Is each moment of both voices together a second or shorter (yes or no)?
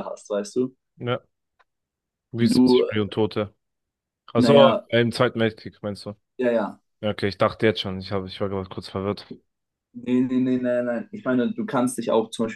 yes